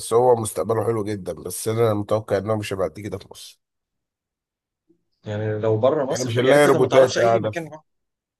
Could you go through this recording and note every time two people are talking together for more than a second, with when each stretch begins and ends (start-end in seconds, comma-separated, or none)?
6.1-7.5